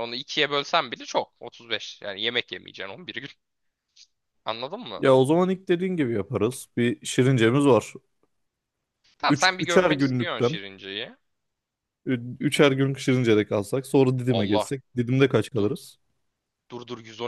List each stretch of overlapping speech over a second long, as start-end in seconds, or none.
9.3-10.6